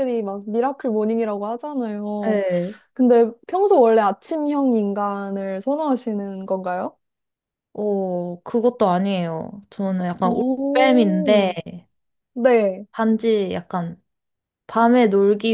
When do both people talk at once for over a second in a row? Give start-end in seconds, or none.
10.2-11.5